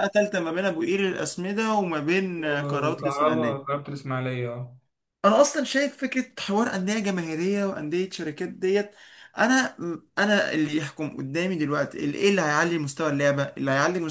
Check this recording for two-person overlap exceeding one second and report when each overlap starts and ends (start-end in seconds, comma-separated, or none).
2.4-3.8